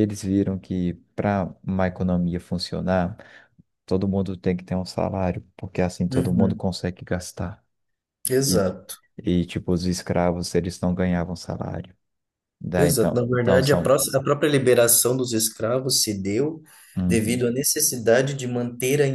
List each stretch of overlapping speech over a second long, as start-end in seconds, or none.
12.8-14.0